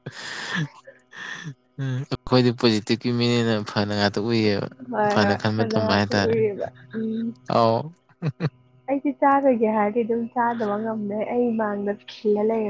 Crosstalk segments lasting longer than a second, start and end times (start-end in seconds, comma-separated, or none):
5.1-6.4